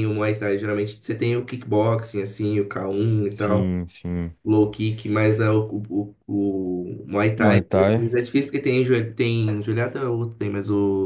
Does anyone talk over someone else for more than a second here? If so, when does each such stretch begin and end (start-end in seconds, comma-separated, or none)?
none